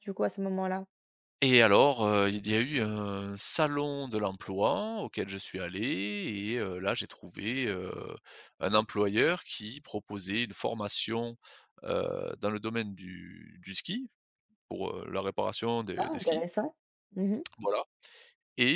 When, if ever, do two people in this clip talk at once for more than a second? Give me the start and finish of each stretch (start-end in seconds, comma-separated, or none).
none